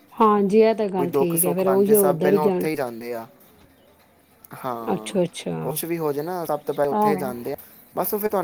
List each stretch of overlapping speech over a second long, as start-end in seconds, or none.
1.0-2.7